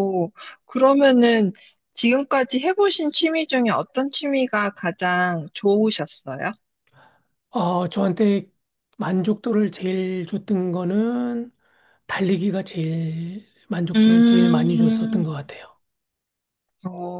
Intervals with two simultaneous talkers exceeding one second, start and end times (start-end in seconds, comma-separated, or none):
13.9-15.2